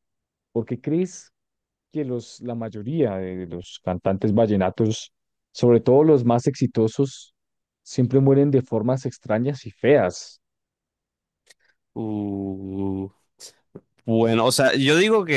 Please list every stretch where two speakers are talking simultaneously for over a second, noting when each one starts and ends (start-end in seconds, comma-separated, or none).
none